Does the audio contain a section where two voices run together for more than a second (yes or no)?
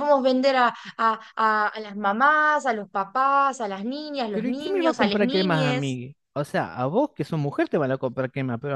yes